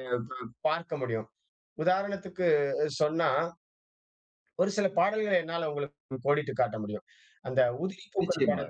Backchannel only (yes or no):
yes